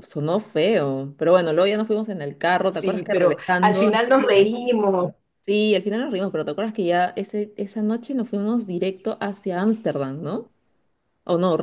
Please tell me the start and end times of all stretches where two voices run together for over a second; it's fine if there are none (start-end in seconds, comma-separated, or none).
2.7-4.5